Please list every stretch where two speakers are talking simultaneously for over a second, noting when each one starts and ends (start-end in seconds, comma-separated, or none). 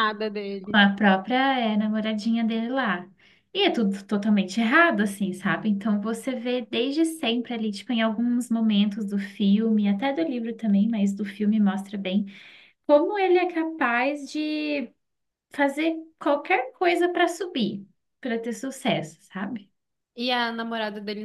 none